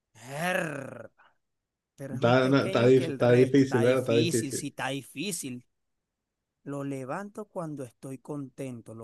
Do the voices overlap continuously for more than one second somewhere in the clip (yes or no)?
yes